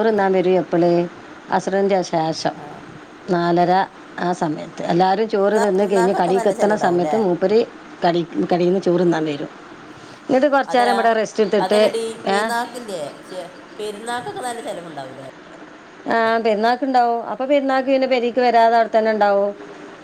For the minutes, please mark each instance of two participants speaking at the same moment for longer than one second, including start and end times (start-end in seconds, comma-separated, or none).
5.4-7.2